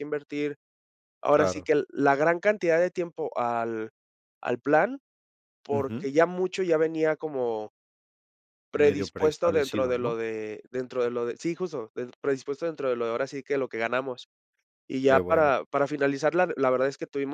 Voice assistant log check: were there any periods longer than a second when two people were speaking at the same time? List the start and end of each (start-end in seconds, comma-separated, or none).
8.8-10.1